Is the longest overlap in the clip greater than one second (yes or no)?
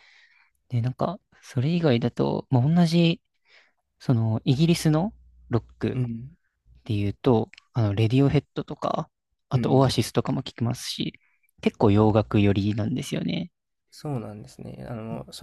no